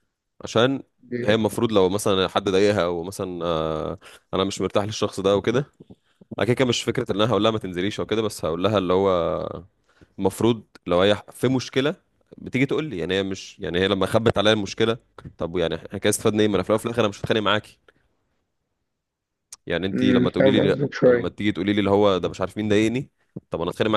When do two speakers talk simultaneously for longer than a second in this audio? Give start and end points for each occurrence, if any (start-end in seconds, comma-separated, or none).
19.9-21.3